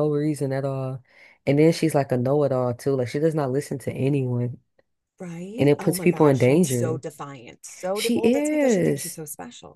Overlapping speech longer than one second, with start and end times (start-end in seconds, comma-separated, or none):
5.6-7.0, 7.9-9.2